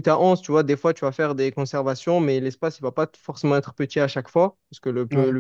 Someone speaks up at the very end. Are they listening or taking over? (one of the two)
listening